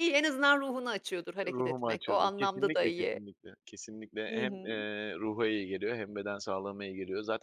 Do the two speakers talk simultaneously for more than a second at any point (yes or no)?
yes